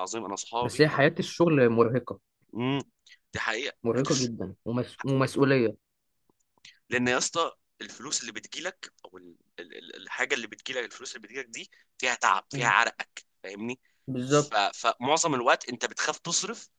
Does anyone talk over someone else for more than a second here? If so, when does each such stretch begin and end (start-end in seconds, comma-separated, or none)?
none